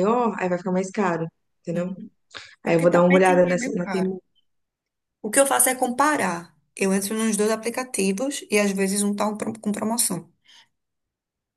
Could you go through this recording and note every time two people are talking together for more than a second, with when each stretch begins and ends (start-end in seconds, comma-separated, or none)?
2.6-4.1